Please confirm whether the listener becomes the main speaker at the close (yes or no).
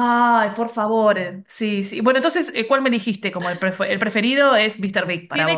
yes